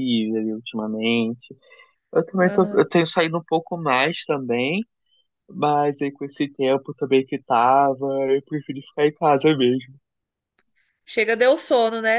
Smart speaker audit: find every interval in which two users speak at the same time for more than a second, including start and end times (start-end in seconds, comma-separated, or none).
none